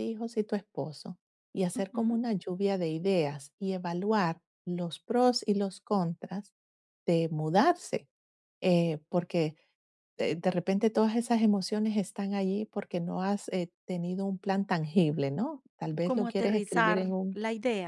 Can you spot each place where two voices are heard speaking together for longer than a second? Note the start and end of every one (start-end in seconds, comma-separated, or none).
16.0-17.4